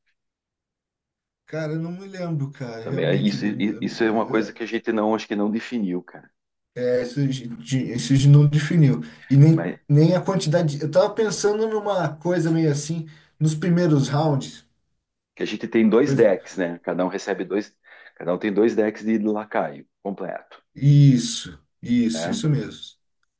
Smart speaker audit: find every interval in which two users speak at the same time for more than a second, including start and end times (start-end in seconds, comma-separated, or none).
2.8-4.6